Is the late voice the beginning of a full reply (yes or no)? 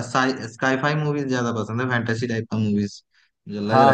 yes